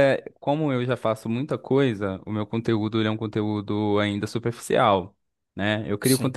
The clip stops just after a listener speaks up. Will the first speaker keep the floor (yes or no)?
yes